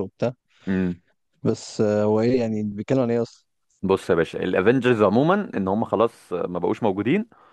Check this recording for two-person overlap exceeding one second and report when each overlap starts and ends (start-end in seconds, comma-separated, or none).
none